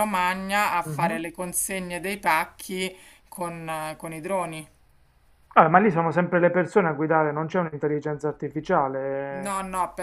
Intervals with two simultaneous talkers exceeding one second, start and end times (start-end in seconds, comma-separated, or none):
none